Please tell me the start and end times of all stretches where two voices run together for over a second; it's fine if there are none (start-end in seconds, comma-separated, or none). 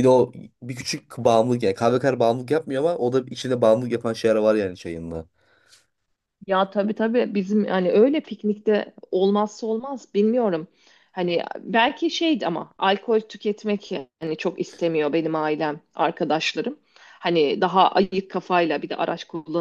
none